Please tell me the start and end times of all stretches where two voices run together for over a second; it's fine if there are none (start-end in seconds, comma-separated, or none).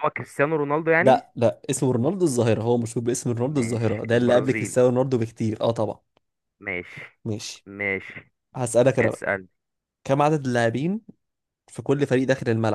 3.5-4.8